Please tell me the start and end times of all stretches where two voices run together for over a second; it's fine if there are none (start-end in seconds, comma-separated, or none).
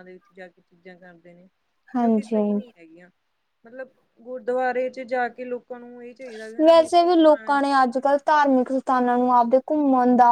none